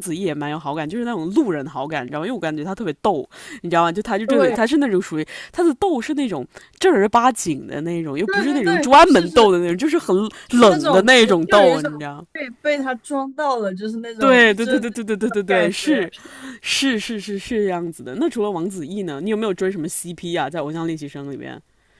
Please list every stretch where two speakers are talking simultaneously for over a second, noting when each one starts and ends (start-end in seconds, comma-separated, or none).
8.2-9.5, 10.4-11.9, 14.2-16.1